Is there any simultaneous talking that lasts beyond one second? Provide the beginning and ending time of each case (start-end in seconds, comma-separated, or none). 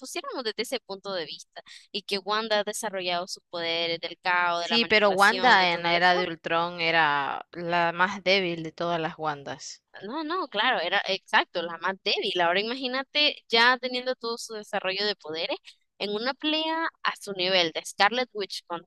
4.6-6.3